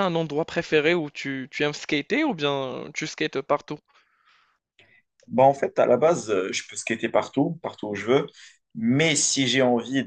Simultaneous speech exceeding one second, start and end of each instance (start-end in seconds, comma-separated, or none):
none